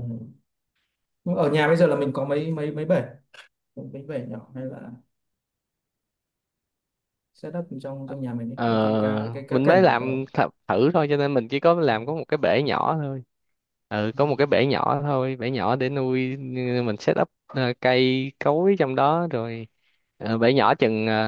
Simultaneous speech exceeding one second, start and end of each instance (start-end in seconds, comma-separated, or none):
8.5-10.3